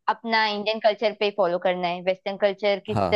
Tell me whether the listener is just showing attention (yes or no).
yes